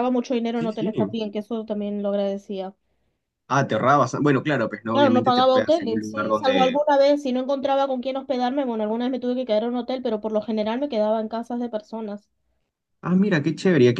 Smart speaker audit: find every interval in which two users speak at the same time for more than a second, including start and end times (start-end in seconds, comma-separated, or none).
4.9-6.8